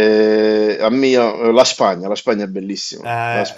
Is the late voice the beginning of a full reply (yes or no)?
yes